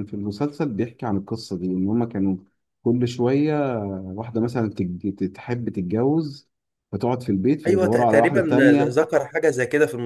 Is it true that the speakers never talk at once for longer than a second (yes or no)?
no